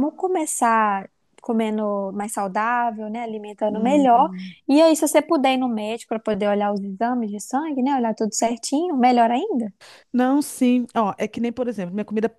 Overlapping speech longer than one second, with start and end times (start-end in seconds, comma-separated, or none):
none